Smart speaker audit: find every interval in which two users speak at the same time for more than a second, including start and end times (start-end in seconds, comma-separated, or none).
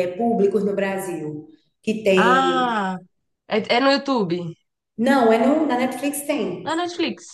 none